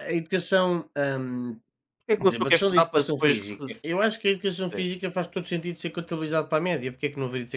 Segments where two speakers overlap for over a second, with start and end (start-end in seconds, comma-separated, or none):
2.1-3.9